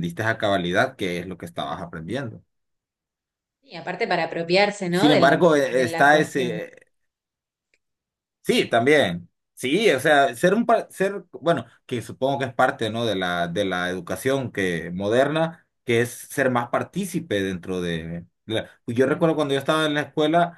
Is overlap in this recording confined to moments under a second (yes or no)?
no